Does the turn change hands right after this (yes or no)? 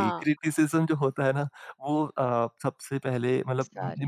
no